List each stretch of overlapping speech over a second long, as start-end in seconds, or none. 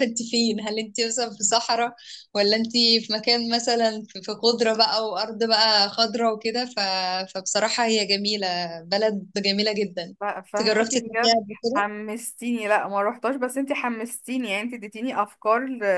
10.2-11.9